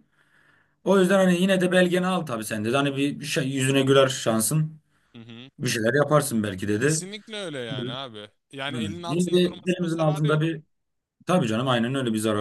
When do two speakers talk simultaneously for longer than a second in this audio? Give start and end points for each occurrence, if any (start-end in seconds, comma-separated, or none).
9.1-10.5